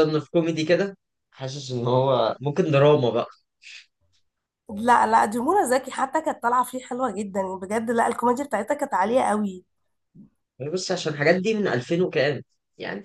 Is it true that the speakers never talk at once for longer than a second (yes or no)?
yes